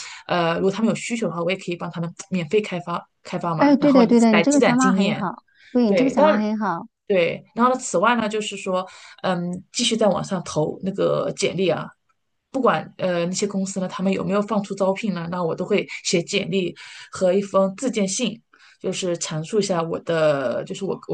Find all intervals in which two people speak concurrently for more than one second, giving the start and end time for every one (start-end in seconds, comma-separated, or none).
3.6-5.2